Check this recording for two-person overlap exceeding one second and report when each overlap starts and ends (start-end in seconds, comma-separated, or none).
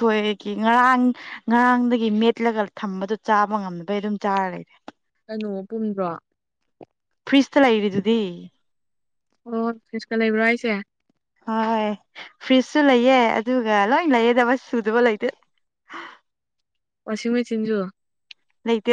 none